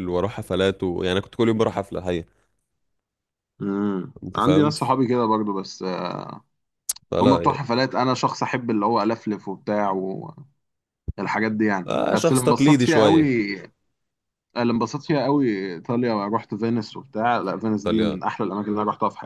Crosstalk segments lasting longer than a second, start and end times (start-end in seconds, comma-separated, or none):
11.9-13.3